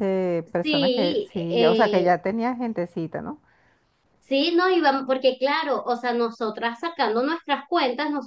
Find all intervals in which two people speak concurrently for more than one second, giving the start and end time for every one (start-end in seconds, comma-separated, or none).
0.6-2.1